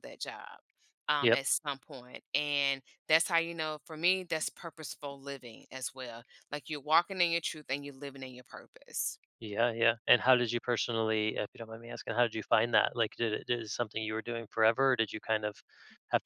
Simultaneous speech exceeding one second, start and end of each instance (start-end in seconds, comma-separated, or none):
none